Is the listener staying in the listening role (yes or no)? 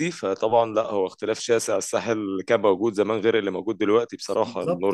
no